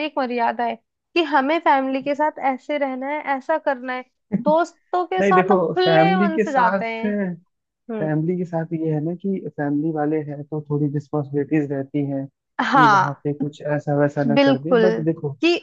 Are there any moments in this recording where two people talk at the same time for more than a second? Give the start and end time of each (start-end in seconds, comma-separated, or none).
5.2-6.8